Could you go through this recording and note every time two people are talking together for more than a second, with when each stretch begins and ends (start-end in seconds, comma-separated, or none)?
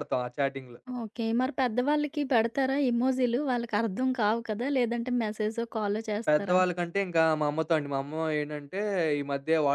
none